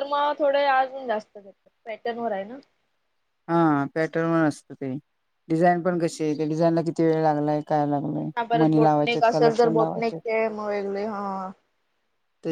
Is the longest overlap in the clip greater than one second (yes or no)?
yes